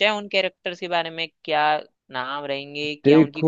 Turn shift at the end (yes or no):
yes